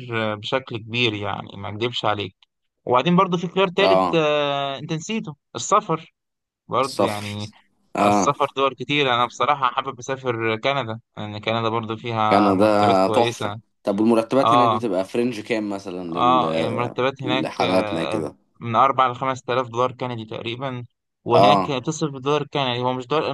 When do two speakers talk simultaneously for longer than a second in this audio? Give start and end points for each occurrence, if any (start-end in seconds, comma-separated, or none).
12.3-13.6, 16.1-18.2